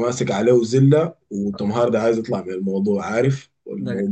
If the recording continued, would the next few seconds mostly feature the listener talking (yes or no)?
no